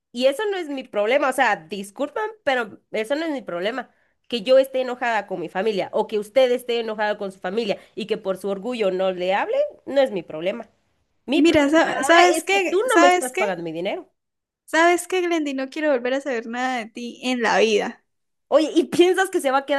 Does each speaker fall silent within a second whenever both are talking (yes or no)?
no